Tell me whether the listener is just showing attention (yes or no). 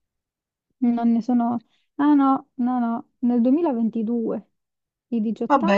no